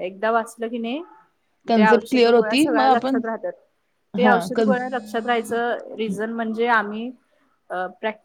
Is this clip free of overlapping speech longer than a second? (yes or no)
no